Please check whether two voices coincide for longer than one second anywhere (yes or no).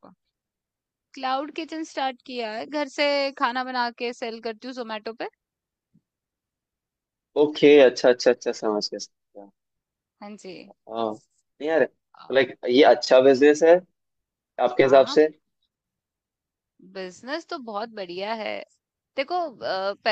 no